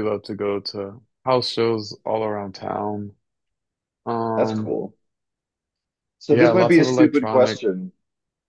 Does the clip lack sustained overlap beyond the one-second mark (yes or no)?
no